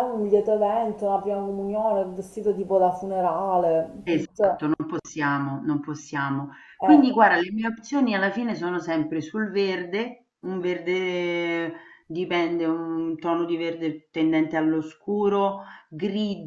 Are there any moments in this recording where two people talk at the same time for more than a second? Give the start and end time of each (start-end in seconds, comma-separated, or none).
none